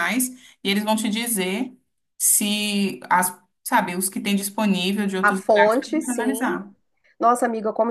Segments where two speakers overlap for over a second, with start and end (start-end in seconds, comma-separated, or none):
5.2-6.6